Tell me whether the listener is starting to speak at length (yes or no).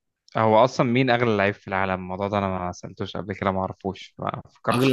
yes